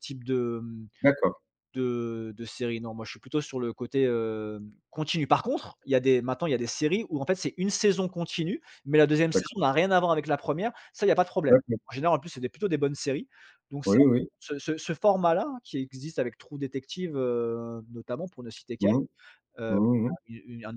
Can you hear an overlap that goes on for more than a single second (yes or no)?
no